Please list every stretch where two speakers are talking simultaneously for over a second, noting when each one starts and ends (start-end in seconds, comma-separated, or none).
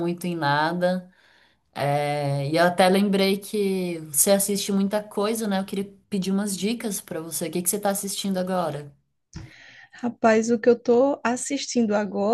none